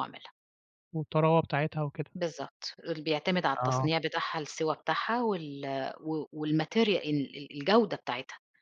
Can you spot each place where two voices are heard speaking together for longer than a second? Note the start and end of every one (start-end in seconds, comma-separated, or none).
none